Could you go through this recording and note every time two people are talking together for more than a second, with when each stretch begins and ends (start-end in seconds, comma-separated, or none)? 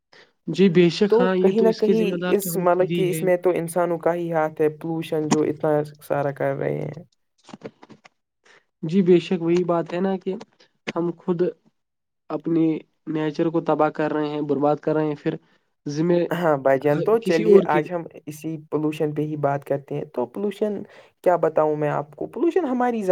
1.1-3.2